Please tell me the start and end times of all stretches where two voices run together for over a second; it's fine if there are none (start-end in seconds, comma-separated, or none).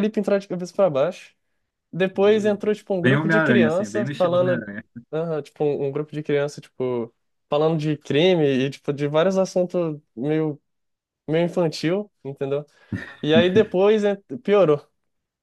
2.1-4.7